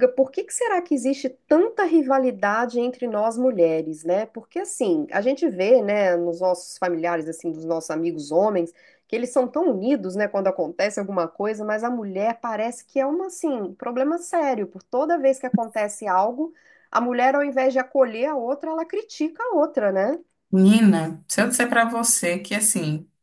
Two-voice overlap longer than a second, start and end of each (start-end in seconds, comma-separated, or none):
none